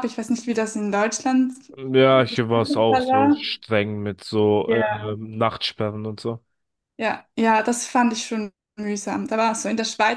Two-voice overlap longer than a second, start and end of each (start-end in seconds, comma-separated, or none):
2.1-3.4